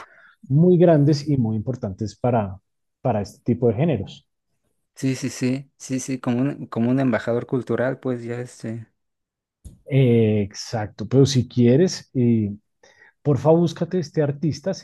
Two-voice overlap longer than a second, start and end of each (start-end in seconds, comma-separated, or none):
none